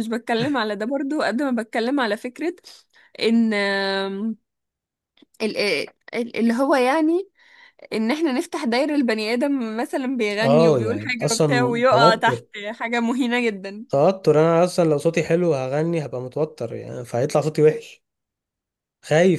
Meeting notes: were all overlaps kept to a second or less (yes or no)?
no